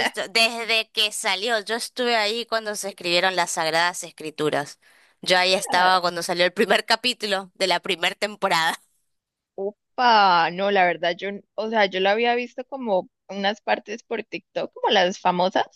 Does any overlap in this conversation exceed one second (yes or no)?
no